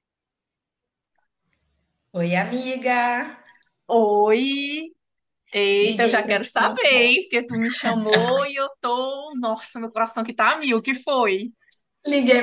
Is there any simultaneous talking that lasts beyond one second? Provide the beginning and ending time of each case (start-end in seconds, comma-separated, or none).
5.8-7.1